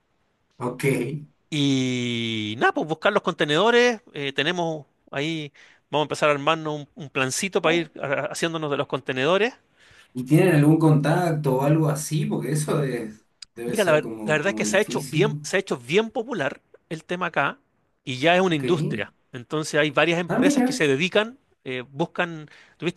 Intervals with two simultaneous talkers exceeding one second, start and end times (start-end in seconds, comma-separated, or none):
13.7-15.4